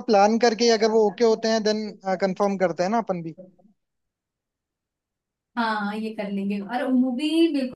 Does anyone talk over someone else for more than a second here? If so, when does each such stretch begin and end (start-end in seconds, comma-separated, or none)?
none